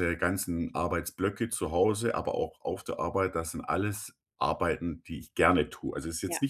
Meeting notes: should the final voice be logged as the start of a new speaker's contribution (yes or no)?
no